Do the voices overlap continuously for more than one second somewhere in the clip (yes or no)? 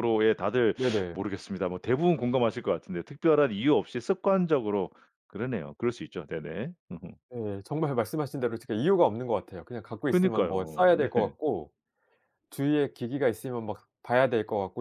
yes